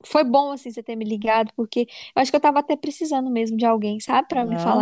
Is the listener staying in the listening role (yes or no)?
no